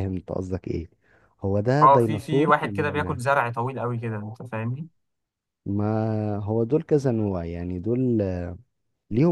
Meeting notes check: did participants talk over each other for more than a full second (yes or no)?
yes